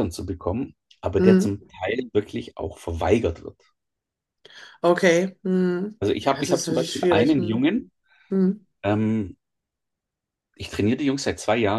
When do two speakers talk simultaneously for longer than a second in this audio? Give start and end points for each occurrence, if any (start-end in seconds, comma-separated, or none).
6.0-7.7